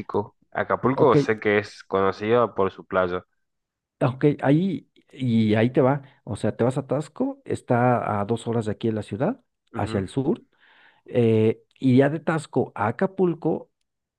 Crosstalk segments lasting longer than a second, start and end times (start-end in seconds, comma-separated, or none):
none